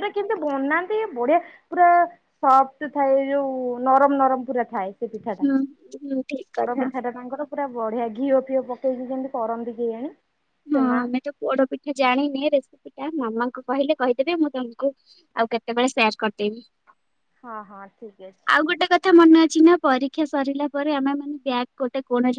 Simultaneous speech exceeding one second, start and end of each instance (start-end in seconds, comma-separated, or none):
none